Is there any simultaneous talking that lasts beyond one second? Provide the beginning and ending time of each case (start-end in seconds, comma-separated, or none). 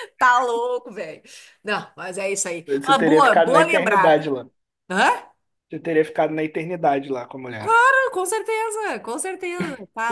2.7-4.3